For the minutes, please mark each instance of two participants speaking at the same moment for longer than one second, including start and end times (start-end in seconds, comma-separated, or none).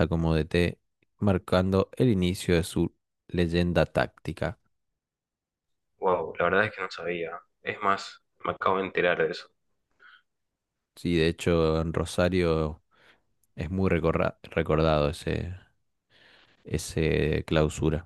none